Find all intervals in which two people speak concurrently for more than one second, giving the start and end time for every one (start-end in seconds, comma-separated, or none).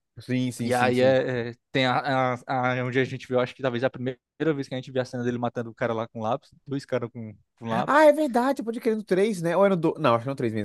none